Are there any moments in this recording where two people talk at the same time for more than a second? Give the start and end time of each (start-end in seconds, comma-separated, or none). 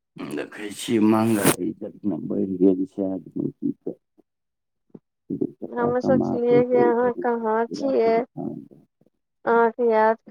5.8-8.3